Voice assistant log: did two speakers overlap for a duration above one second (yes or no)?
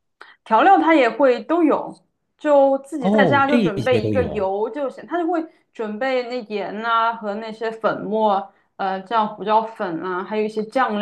yes